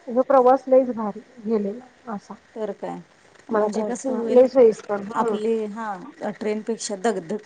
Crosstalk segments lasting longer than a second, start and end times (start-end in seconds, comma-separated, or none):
none